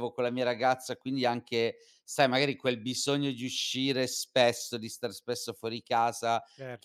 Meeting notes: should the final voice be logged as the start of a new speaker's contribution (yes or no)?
no